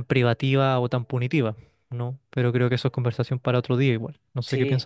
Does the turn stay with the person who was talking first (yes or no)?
no